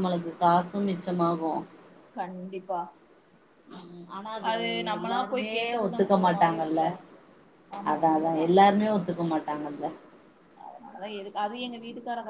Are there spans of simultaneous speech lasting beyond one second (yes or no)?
yes